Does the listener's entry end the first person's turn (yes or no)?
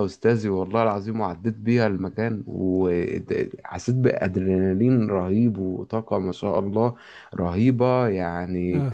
no